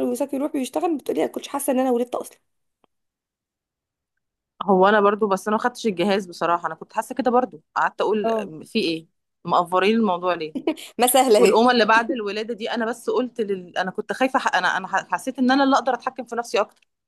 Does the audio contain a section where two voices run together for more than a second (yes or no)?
no